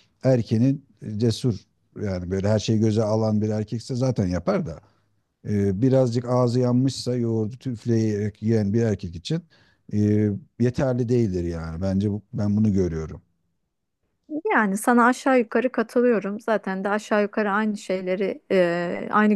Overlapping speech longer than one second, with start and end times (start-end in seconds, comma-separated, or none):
none